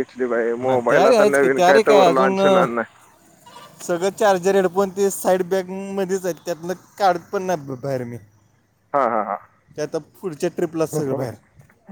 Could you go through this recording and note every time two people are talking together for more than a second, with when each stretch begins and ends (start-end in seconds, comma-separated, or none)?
0.7-2.6